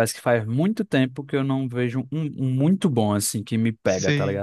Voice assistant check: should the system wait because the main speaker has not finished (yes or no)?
no